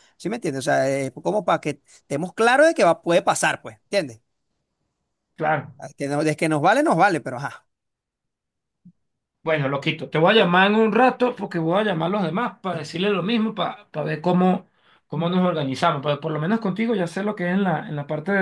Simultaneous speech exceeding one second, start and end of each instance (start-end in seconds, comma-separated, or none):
none